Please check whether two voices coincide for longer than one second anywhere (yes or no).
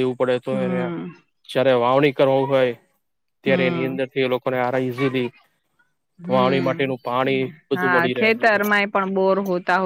yes